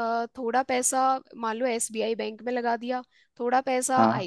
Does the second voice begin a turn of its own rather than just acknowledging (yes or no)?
no